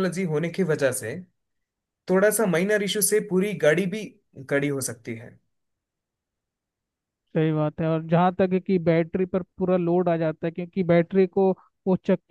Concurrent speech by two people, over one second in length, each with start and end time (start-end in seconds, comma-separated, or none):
none